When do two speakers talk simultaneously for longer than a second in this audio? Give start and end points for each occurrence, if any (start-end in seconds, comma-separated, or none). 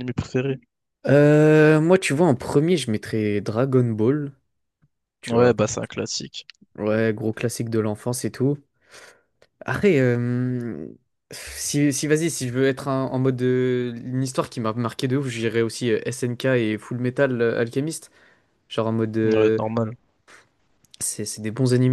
none